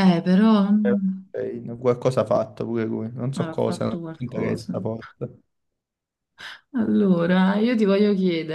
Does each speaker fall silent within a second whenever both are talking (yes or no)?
no